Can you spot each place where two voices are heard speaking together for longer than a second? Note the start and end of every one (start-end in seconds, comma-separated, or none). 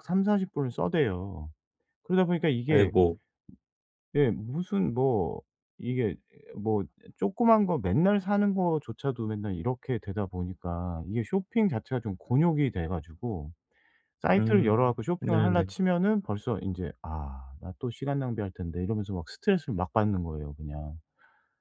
14.4-15.7